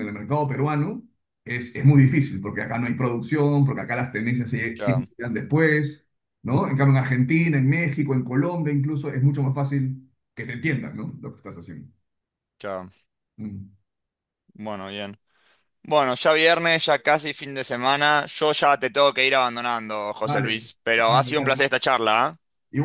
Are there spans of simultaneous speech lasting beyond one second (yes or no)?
yes